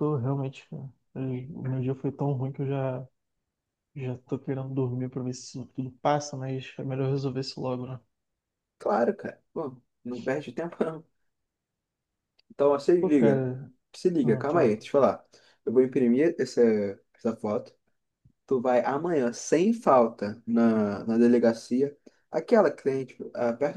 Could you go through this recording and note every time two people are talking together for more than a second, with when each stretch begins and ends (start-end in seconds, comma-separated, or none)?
none